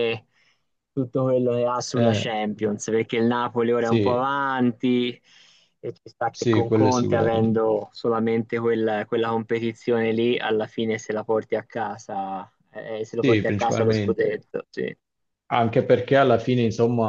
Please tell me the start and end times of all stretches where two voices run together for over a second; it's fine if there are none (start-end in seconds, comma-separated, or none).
6.3-7.7, 13.2-14.5